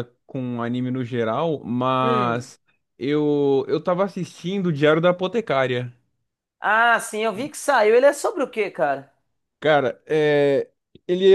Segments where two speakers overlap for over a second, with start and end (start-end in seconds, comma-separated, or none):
none